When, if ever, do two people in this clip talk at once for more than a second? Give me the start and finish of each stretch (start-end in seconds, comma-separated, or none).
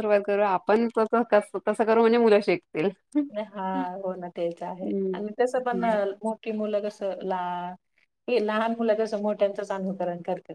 none